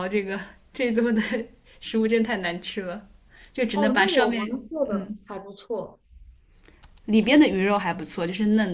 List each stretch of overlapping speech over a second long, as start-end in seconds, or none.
3.7-5.2